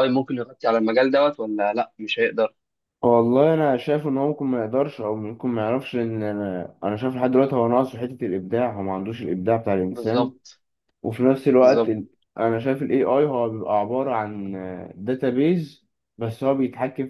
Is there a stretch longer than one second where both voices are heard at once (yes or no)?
no